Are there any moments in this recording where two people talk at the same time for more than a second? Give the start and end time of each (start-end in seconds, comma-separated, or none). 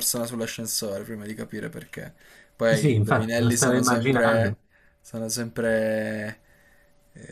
2.7-4.6